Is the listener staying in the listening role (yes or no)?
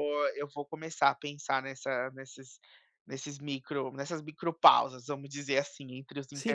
no